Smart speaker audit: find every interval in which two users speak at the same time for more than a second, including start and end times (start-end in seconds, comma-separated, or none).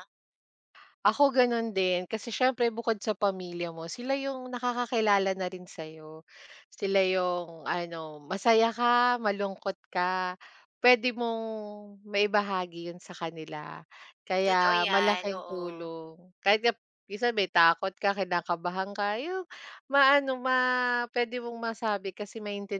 14.4-15.9